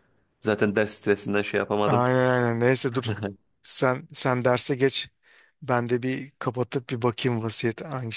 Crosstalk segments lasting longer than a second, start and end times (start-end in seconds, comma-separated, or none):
none